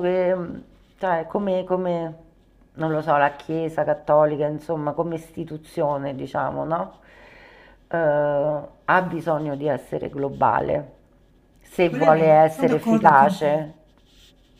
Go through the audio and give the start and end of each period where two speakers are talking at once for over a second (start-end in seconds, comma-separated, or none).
11.8-13.7